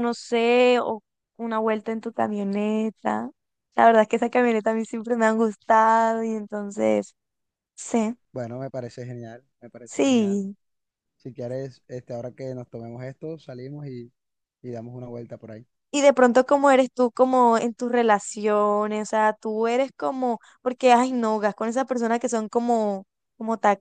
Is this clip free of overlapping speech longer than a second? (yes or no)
yes